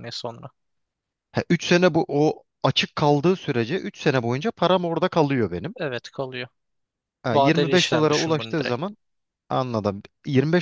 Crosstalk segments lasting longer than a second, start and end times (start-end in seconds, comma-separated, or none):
7.3-8.9